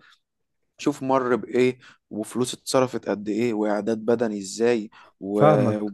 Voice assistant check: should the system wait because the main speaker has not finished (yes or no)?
yes